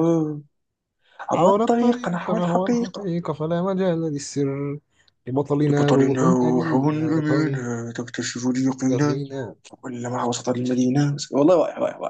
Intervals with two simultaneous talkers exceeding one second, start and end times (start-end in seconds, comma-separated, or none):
1.3-3.1, 5.7-7.2